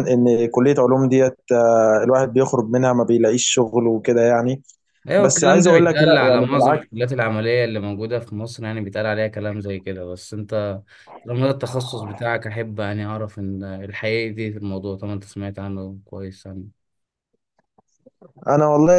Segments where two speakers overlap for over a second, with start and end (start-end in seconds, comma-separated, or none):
5.2-6.8